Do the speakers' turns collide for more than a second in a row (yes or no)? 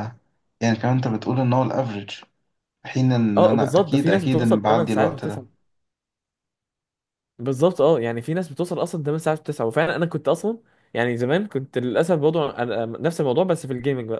yes